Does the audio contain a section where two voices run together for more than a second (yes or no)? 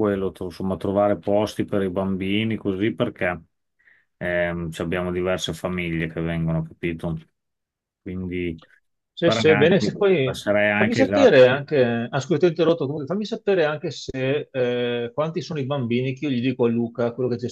yes